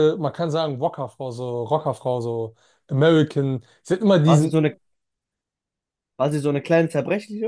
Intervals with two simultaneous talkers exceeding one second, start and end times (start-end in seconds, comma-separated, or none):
none